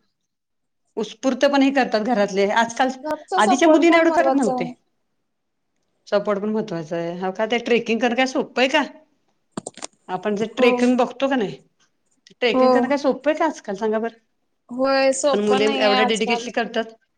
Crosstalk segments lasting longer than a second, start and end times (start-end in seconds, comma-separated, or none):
3.4-4.7